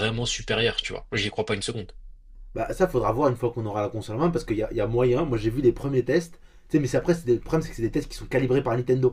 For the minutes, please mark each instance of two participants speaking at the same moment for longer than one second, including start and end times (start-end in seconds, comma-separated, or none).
none